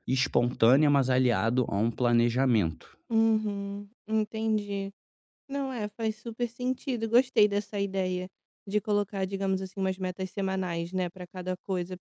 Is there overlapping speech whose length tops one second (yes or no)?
no